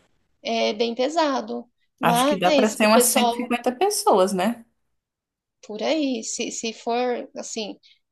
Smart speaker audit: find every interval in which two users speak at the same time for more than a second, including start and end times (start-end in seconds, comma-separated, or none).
2.0-3.5